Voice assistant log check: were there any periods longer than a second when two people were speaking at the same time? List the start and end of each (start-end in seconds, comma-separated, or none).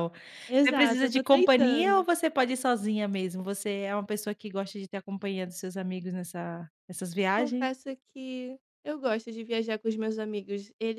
0.6-2.1